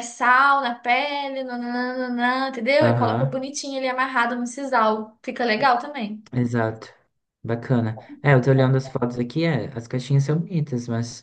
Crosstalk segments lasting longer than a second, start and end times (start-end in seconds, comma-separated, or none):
none